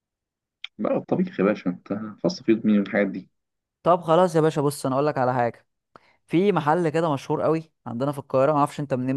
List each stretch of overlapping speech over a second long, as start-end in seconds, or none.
none